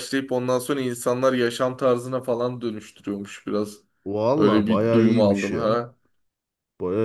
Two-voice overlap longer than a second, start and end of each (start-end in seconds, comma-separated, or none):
4.4-5.8